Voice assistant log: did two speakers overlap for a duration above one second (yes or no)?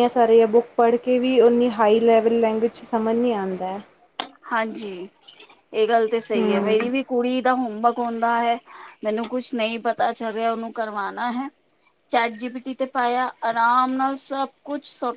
no